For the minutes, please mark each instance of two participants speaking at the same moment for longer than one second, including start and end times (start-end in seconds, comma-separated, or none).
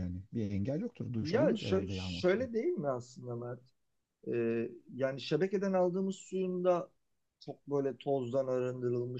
1.2-2.5